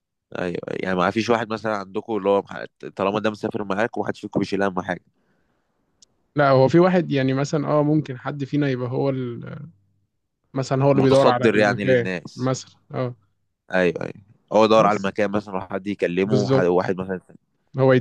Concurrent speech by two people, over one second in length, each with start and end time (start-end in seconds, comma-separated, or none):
10.9-12.5